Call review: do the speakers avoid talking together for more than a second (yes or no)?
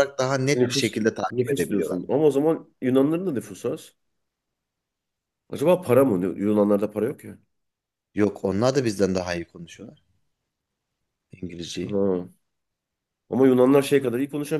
no